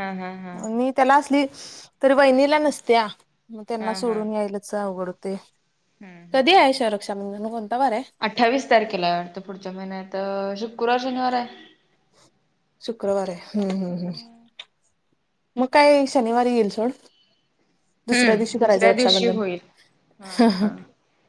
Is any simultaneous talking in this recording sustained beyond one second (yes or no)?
yes